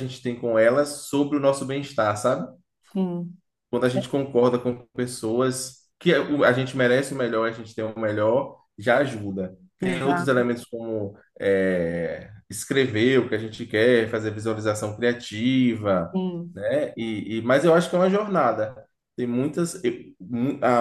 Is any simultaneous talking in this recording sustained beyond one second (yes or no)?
no